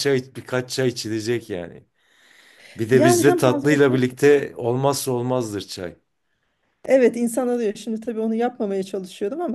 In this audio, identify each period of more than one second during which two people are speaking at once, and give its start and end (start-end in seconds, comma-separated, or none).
2.9-4.4